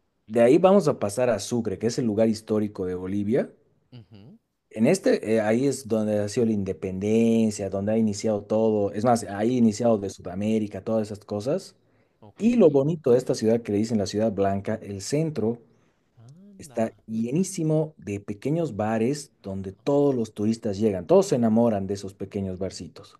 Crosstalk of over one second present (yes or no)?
no